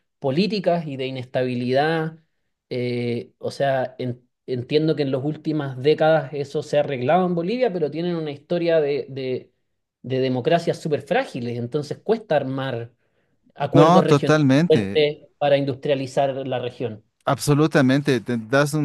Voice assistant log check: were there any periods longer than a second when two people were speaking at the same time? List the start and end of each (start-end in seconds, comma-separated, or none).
13.7-15.0